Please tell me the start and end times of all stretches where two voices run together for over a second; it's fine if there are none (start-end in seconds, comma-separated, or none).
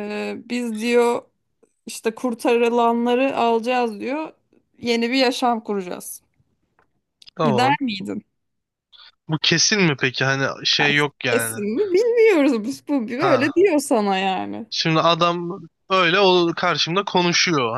none